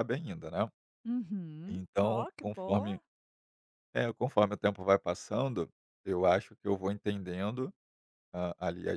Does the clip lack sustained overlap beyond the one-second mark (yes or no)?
no